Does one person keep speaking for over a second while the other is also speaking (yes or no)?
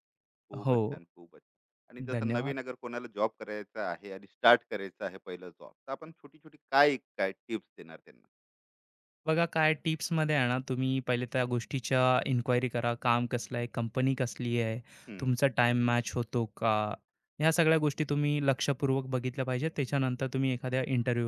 no